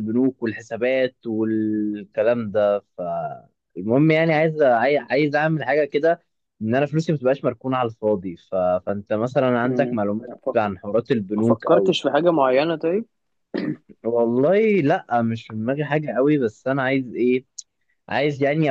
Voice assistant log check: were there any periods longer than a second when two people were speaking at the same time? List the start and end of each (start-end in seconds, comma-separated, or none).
none